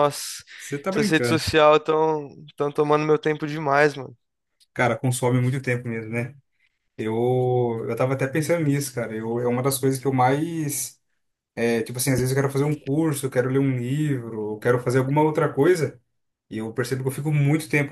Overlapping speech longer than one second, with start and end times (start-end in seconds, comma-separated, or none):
none